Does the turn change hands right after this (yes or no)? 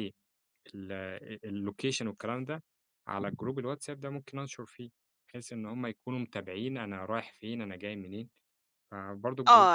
yes